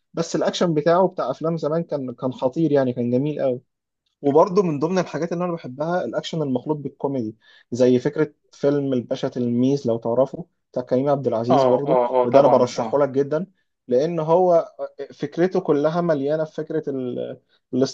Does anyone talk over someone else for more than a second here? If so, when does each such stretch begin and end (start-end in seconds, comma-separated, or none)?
11.5-13.0